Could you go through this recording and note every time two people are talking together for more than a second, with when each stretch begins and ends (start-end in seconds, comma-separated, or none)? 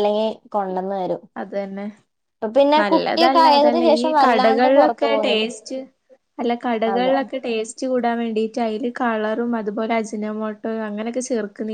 2.9-5.5